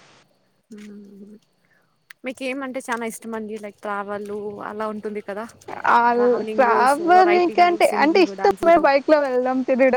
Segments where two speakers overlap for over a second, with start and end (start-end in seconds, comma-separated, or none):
6.6-8.9